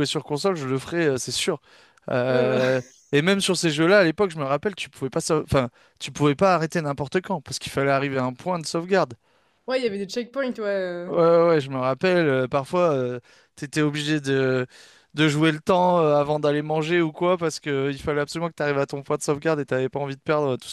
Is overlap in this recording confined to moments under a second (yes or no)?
yes